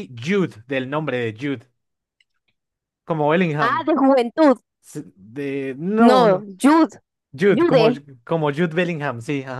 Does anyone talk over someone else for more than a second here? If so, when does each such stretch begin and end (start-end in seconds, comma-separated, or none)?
none